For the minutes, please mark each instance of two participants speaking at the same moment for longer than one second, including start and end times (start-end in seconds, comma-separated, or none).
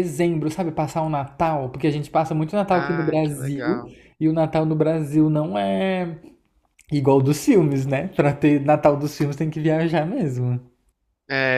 2.7-3.9